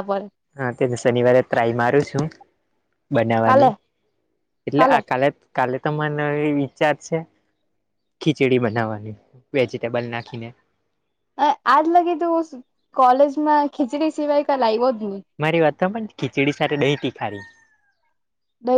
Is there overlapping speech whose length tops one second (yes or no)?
no